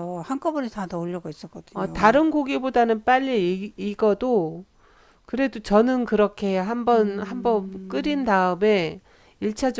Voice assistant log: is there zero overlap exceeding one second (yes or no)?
no